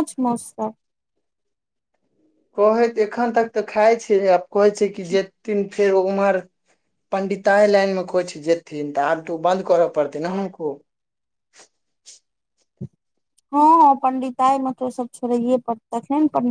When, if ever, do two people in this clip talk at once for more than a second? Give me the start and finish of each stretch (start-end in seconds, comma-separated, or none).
none